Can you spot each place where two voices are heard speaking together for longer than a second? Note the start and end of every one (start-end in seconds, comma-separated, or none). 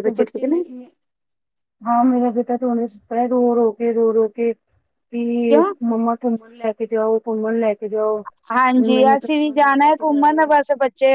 8.8-10.6